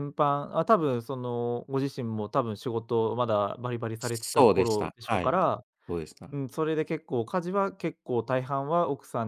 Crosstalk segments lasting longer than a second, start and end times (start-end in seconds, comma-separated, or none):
4.0-5.4